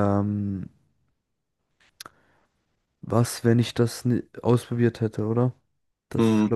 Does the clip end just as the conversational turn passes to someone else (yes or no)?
yes